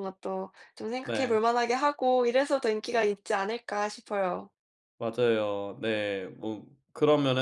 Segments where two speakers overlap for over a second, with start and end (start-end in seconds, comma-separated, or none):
none